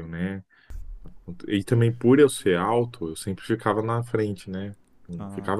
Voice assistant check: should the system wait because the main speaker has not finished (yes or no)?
yes